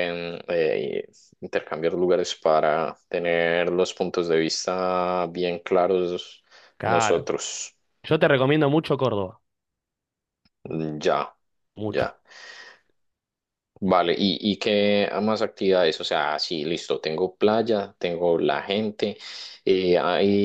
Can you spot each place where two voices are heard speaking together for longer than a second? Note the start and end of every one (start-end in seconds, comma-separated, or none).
none